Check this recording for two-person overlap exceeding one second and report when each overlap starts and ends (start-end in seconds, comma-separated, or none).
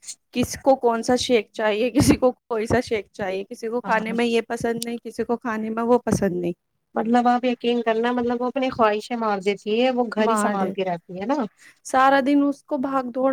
none